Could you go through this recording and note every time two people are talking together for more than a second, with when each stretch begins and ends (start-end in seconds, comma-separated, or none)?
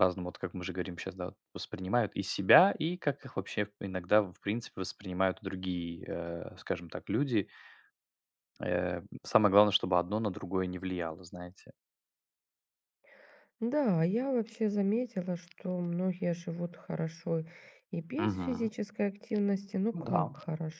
none